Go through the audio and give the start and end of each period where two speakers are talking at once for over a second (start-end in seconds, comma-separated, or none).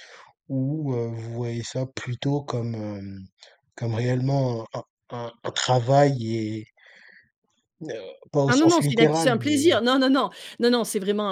8.5-9.7